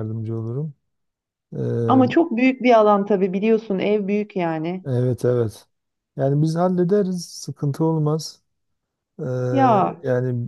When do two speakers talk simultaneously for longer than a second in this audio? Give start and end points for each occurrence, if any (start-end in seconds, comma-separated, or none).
none